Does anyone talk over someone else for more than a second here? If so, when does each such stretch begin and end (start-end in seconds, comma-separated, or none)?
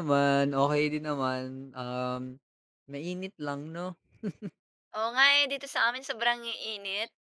none